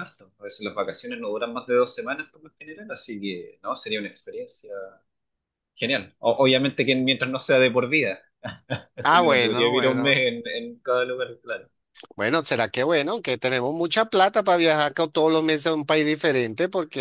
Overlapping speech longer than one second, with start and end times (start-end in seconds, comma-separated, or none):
9.0-10.3